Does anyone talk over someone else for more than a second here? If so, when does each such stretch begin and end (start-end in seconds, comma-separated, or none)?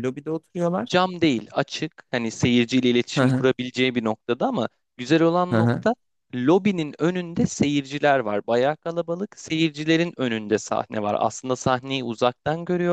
none